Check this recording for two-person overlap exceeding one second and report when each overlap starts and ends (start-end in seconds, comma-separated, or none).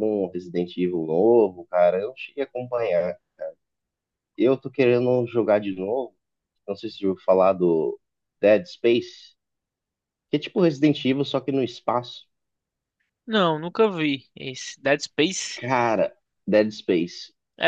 none